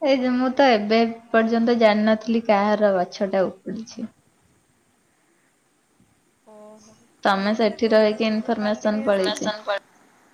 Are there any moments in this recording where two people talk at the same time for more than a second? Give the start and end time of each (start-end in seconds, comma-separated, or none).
7.4-9.4